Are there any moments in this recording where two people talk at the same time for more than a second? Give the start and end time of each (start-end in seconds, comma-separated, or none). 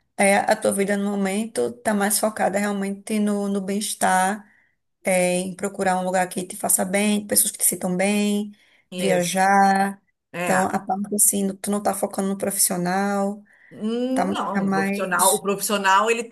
14.1-15.4